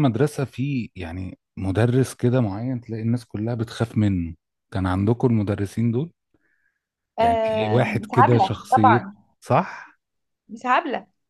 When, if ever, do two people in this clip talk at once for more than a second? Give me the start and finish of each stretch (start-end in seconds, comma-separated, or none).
7.2-9.0